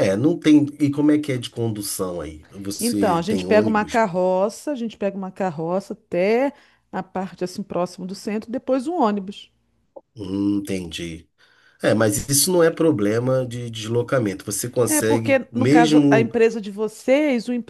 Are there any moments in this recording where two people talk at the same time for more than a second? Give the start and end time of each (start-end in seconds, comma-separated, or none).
2.8-4.0, 14.8-16.3